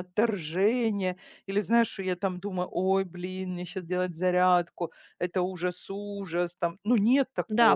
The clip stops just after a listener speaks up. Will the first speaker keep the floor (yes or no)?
no